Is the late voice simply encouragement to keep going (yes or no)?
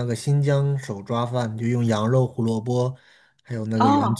yes